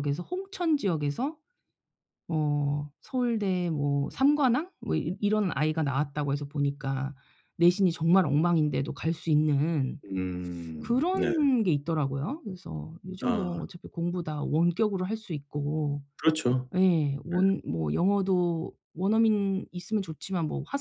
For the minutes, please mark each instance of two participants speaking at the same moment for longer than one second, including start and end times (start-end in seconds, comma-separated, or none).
none